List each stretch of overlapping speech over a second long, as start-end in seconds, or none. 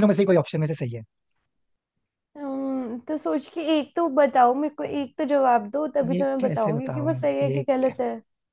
6.1-7.6